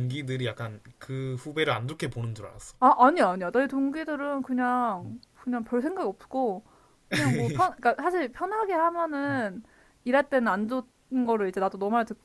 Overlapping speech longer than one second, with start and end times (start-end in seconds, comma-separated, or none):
none